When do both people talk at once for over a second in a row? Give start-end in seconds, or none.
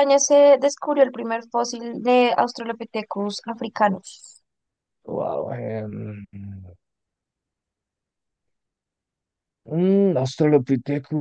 none